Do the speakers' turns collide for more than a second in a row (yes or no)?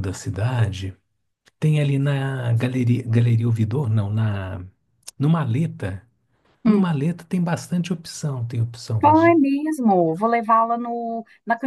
no